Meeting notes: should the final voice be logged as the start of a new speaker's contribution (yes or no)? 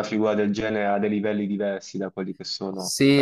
yes